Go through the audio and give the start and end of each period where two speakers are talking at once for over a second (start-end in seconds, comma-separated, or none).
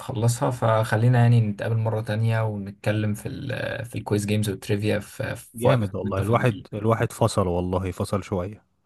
5.5-6.8